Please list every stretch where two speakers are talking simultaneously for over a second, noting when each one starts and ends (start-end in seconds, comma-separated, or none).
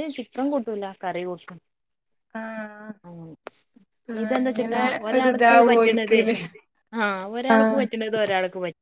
4.2-6.2